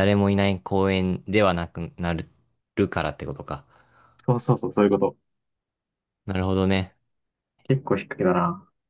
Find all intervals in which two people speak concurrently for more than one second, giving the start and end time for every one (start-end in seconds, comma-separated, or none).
none